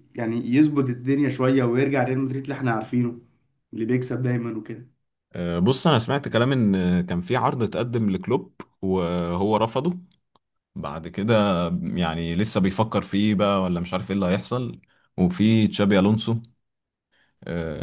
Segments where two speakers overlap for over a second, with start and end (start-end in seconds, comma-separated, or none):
none